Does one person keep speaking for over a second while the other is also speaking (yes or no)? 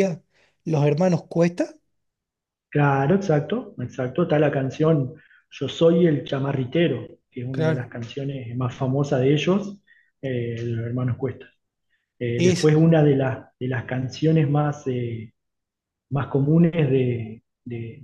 no